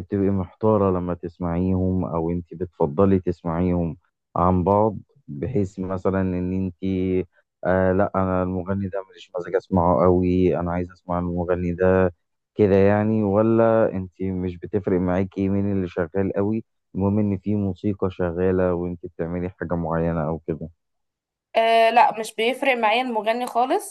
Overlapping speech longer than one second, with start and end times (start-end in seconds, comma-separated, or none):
none